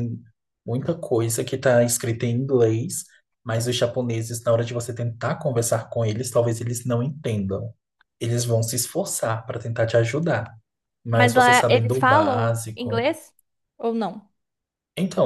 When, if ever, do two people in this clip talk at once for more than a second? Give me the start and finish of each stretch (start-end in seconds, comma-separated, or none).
11.1-13.1